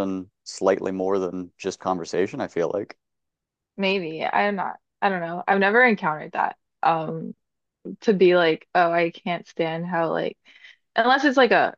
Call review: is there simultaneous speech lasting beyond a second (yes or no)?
no